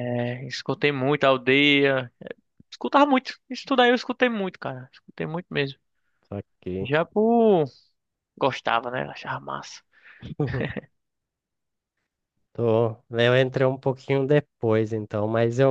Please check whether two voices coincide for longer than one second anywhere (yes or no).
no